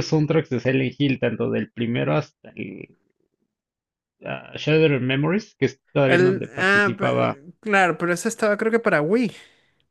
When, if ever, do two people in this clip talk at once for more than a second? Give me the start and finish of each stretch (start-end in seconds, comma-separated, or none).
6.1-7.4